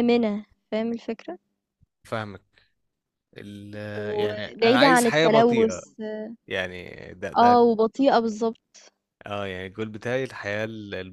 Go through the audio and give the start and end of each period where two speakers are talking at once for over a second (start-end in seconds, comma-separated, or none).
4.2-5.8